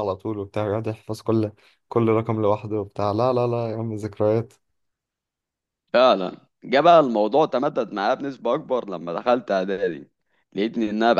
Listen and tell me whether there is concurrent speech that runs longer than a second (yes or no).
no